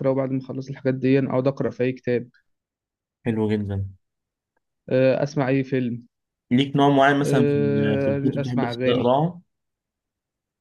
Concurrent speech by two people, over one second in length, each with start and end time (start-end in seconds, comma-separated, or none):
7.2-9.1